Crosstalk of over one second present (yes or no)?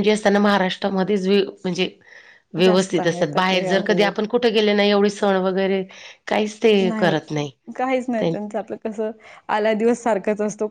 yes